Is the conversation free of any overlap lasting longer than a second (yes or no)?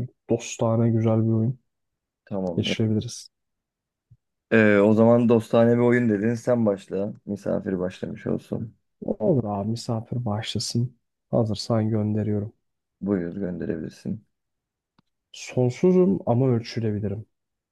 yes